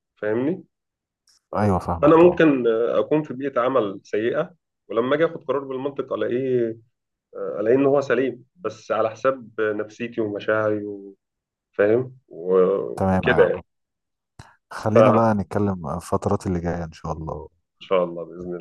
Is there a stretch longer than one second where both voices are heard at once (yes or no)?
no